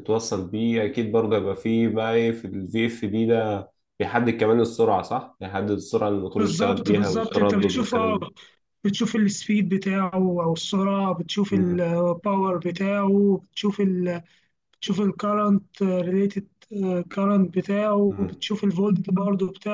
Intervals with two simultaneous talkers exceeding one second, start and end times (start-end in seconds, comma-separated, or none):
6.4-8.2